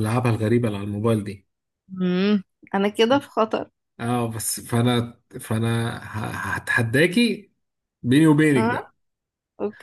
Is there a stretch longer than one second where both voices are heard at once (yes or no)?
no